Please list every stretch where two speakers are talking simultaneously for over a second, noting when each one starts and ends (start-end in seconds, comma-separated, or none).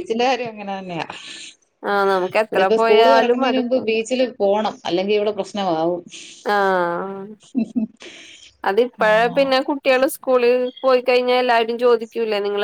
2.5-3.9